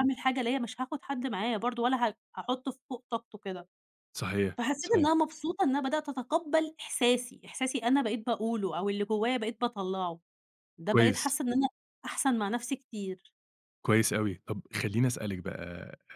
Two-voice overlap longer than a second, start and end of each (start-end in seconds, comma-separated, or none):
none